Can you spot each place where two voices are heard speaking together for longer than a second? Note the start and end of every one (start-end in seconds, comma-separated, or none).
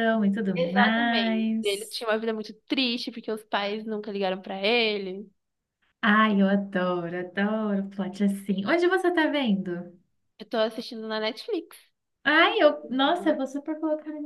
0.6-1.9